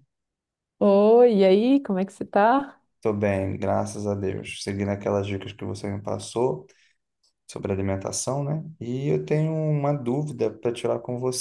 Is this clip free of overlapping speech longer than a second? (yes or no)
yes